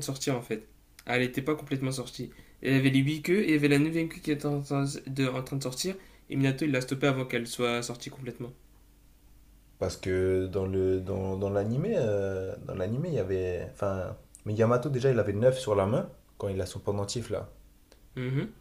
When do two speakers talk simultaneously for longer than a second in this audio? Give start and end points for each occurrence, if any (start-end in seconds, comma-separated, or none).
none